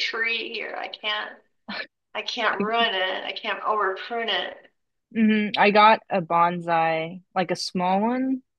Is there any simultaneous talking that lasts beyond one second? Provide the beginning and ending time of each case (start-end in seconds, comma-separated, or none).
none